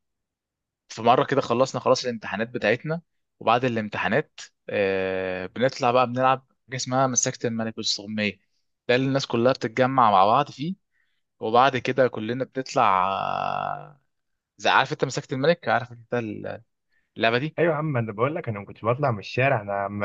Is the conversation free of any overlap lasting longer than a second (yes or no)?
yes